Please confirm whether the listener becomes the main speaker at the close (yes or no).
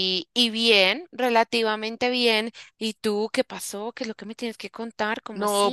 yes